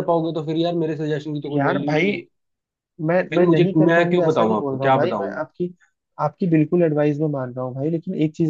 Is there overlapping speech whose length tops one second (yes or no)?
yes